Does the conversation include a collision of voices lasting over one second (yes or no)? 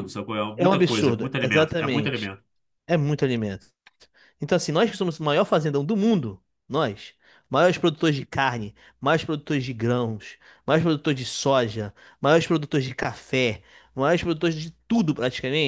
yes